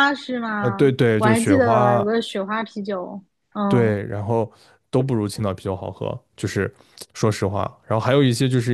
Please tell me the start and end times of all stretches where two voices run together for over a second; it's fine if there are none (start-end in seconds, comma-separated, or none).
0.6-2.1